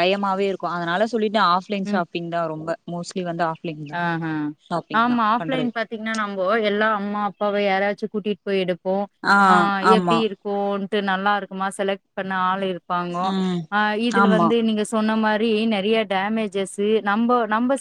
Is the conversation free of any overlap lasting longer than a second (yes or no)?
yes